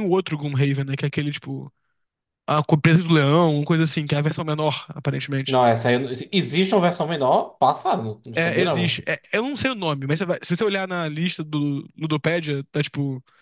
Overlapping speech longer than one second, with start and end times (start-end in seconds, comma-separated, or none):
none